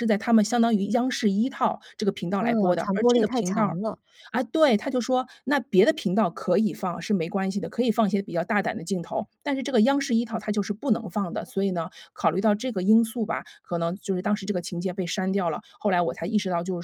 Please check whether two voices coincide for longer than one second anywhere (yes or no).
yes